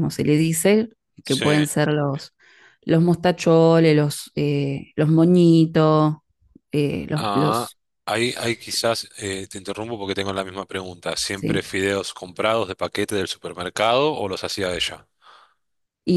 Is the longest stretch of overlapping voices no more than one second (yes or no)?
yes